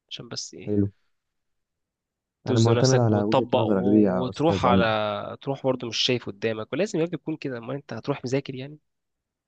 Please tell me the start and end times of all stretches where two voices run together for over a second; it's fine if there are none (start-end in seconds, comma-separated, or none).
2.5-4.9